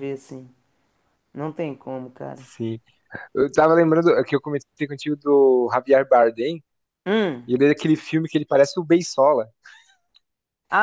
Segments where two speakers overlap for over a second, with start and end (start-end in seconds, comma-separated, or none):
none